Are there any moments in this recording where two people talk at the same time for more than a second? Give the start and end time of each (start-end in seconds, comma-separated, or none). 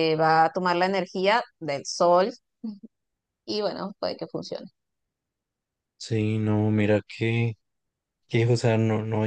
none